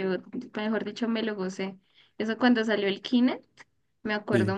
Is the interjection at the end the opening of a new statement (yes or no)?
no